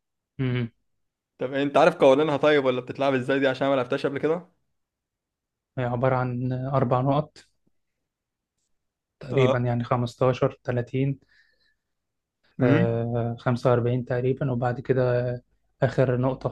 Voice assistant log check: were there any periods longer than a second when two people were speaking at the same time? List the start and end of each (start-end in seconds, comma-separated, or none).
none